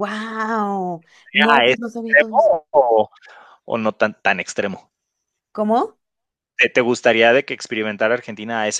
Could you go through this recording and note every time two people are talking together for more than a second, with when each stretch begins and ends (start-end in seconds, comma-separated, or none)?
1.2-2.5